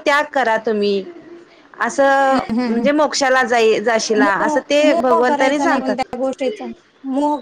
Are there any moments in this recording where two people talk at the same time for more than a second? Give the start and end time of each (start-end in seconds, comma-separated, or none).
4.3-6.0